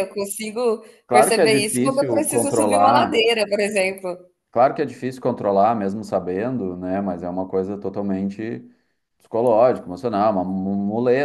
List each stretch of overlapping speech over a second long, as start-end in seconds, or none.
1.1-3.2